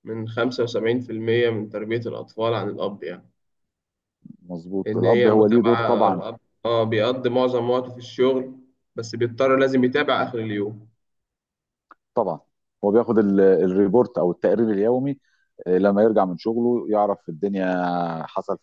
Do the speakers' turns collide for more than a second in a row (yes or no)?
yes